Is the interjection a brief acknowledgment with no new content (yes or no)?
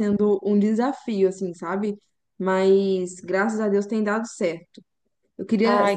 yes